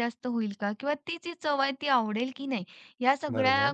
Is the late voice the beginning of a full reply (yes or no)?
no